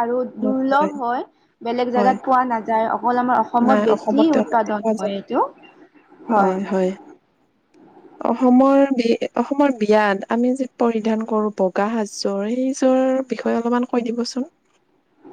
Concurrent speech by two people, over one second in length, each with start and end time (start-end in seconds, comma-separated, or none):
3.6-5.1